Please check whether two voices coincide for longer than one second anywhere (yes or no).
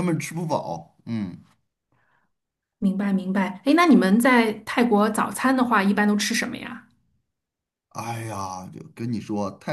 no